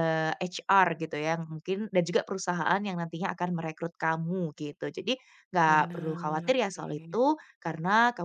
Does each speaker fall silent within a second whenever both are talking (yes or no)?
no